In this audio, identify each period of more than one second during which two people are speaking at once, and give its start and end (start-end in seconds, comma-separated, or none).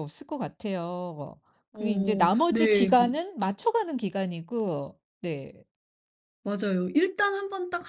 1.7-3.1